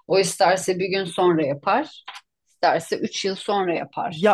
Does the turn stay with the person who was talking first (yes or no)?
no